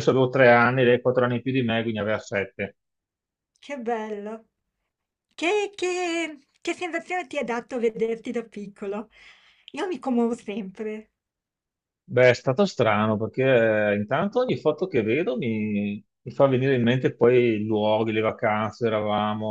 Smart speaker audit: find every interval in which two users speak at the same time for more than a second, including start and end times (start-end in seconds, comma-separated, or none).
none